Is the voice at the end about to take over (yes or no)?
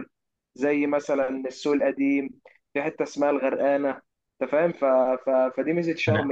no